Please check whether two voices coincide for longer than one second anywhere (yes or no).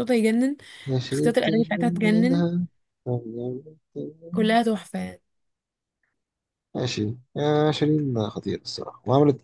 yes